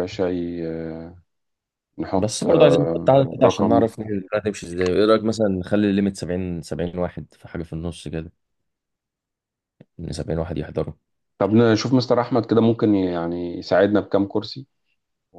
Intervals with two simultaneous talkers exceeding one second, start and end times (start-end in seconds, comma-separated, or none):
2.2-3.9